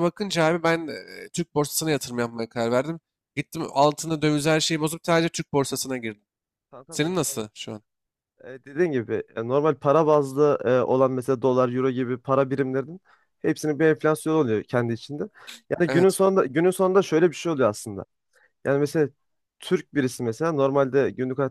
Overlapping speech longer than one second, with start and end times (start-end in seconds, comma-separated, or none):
none